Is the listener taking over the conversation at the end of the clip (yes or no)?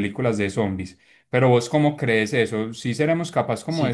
no